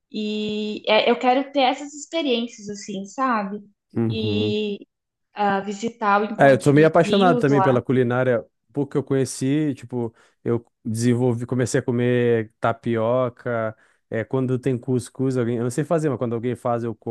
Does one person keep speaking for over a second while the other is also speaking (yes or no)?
yes